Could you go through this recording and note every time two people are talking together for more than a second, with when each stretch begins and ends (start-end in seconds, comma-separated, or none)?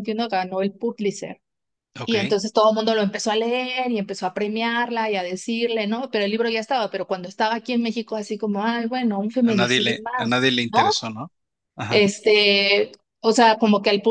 9.4-10.8